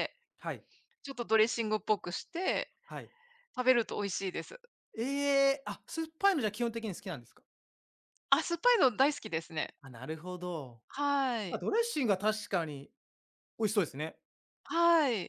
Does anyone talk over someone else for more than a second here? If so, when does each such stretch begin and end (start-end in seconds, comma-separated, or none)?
none